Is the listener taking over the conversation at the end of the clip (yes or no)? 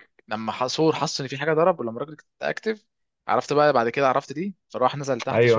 yes